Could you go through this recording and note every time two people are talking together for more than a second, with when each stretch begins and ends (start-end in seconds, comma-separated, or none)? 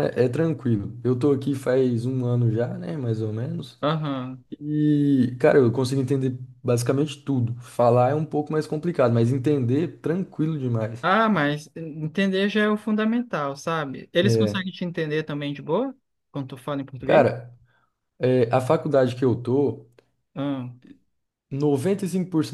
none